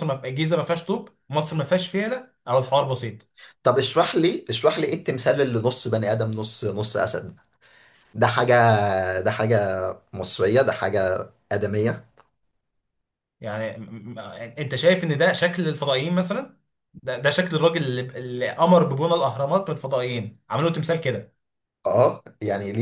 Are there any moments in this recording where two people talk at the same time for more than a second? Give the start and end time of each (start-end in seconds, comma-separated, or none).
none